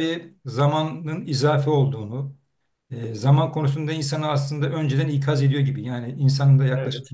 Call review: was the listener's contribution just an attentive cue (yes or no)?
yes